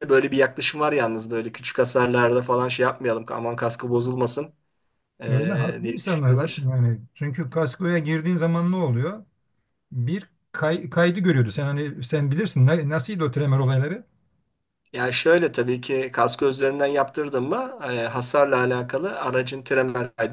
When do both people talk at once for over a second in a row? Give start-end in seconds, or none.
5.3-6.7